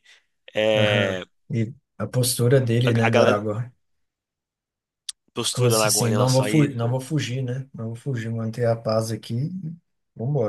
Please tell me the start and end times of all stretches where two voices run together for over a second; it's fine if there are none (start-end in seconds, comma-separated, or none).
5.5-7.0